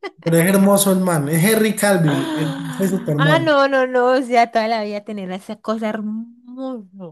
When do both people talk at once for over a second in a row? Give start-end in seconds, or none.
2.1-3.6